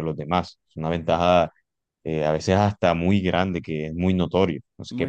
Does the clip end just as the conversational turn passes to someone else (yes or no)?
yes